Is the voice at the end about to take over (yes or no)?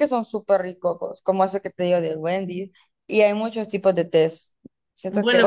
yes